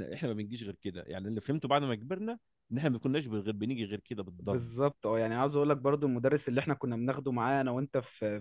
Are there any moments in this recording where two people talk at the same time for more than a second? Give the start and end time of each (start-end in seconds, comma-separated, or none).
none